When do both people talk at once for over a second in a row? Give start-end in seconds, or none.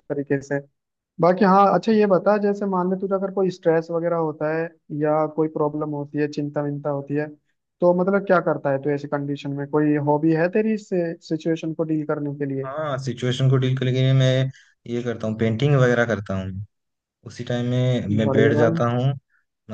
none